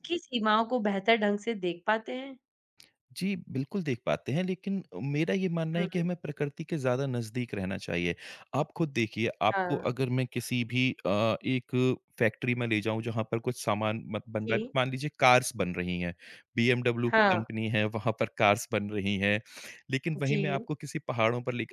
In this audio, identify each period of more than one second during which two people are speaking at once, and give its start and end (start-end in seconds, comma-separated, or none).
none